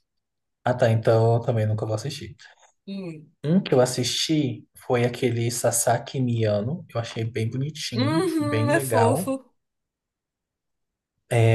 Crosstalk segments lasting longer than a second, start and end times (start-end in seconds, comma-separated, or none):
8.0-9.3